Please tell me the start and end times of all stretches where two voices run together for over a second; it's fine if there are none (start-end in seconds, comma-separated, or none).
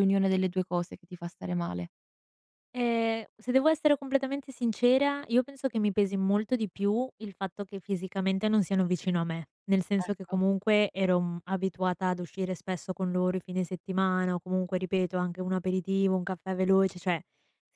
none